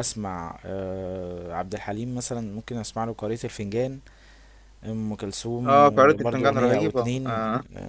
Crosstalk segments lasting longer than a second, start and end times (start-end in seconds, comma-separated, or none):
5.6-7.4